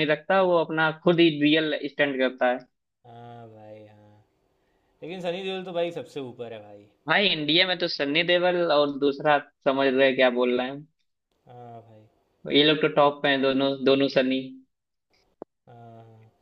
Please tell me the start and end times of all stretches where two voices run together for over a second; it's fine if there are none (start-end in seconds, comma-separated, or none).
none